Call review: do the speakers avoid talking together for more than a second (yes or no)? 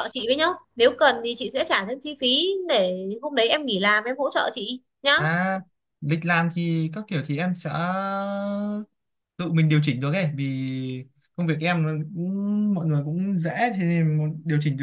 yes